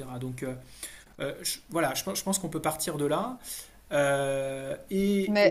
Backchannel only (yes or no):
no